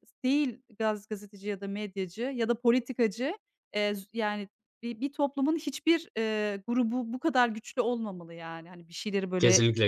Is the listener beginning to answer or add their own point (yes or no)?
yes